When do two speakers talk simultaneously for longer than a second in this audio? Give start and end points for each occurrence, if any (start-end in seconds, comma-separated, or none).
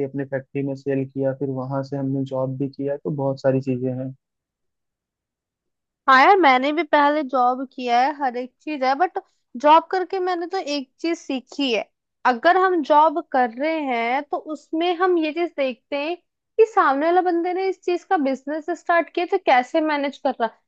none